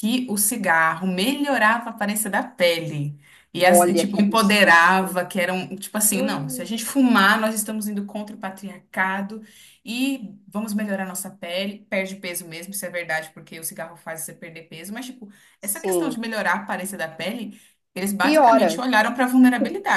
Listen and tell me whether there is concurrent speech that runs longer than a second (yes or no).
yes